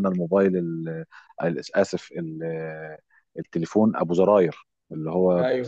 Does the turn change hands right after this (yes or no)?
no